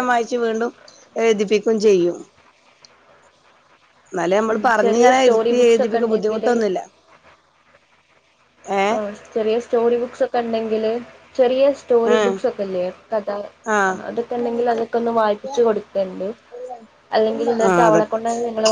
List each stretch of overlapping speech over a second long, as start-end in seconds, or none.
4.5-6.5